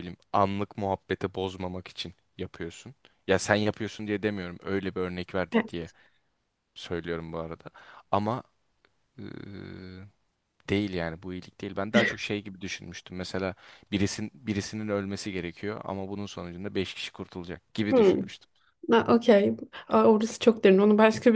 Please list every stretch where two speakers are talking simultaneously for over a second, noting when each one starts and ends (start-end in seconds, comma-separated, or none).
none